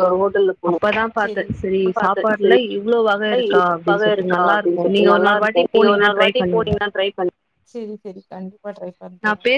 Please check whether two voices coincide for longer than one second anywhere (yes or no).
yes